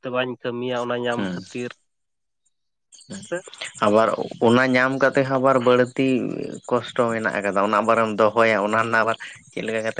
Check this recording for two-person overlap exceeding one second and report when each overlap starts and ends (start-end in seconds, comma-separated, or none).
none